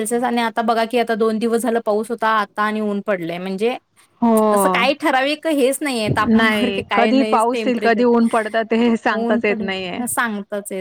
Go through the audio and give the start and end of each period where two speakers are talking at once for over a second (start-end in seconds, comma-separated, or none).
6.4-8.0